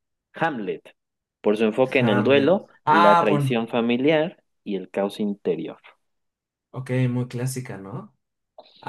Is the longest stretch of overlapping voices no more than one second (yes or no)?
no